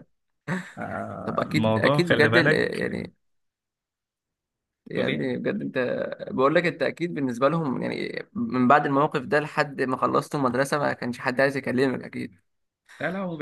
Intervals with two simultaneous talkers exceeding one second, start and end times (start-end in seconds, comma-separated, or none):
1.2-2.9